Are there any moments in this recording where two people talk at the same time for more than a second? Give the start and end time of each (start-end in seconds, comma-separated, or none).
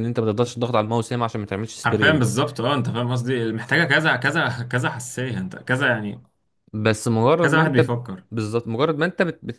none